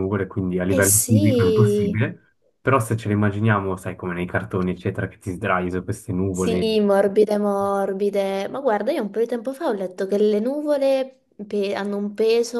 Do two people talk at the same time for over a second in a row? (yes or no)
yes